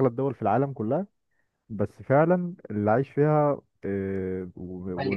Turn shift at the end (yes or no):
no